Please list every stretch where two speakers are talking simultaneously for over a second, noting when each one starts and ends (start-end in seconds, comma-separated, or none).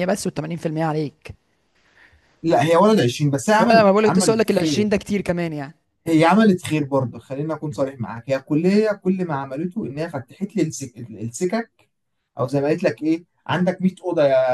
3.6-4.9